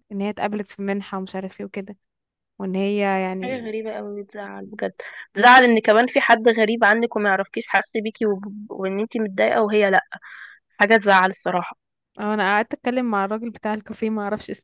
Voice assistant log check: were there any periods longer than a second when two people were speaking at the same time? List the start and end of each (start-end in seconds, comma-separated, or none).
none